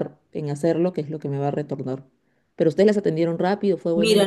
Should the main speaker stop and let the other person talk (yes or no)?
yes